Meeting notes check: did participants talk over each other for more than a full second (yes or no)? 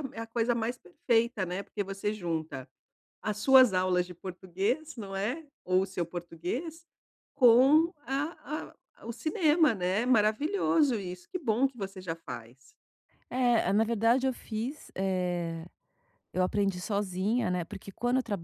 no